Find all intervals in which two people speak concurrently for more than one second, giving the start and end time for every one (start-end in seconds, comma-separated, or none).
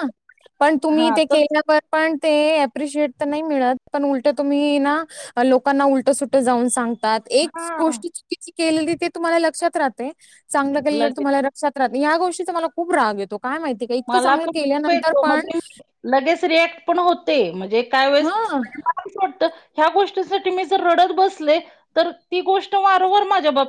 14.1-15.4